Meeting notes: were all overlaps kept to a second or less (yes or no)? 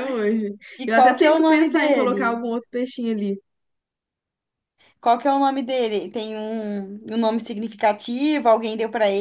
no